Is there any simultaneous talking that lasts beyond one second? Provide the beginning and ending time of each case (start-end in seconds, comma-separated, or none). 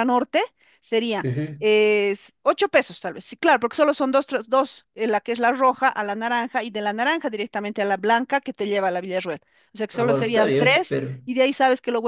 9.9-11.2